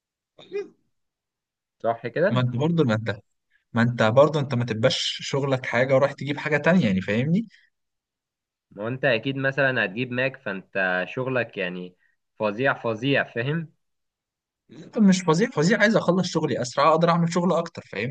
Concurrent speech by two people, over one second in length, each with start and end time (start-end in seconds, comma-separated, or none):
none